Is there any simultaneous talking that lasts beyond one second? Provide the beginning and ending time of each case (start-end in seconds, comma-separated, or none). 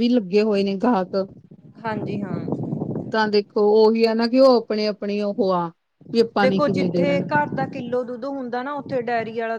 none